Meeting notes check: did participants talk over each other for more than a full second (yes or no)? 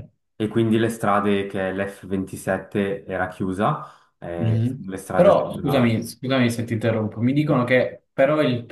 yes